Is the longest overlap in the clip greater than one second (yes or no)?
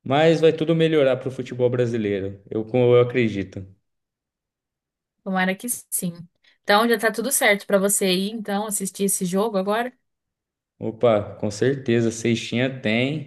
no